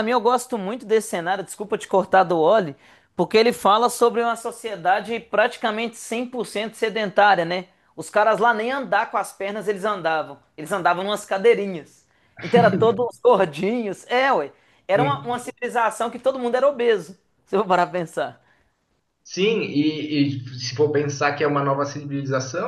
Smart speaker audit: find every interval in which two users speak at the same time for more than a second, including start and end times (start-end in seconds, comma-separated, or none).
none